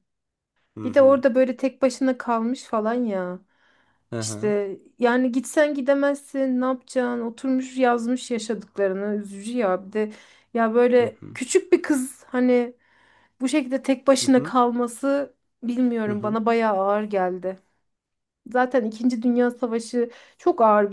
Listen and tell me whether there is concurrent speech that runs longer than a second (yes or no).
no